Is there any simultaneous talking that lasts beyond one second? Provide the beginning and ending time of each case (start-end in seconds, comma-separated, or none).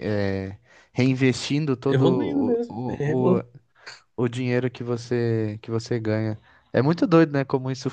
1.9-3.4